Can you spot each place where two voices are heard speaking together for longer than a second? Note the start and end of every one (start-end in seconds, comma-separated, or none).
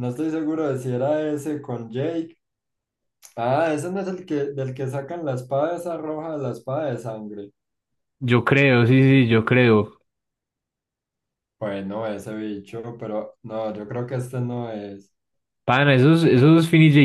none